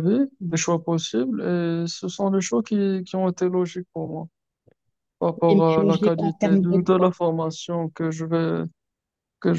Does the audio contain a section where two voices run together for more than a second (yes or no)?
yes